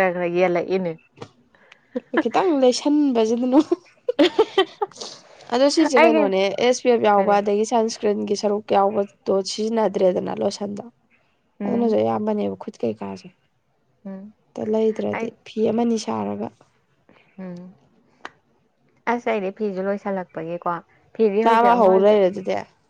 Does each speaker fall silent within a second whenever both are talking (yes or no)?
yes